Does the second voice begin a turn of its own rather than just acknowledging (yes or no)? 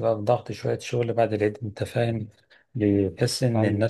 no